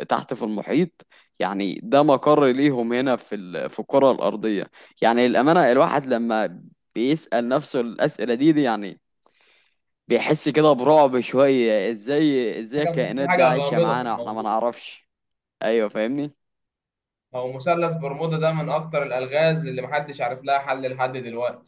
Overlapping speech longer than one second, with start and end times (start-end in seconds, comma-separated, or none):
12.8-14.6